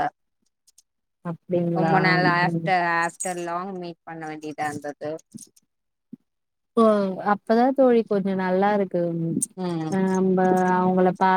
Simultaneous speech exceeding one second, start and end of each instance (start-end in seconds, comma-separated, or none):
none